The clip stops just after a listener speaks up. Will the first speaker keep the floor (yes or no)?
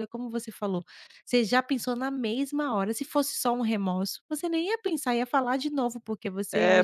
no